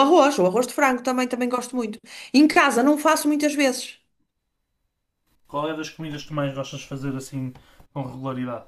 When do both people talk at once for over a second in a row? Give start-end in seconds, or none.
none